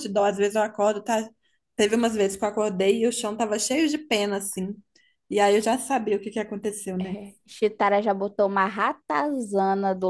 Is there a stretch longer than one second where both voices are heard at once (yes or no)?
no